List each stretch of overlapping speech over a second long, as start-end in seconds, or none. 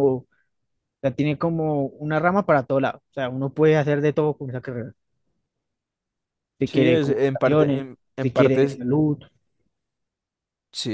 6.7-8.8